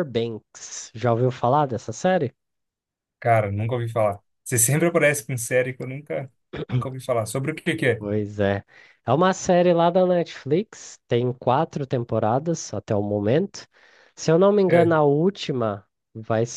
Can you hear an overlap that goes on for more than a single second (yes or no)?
no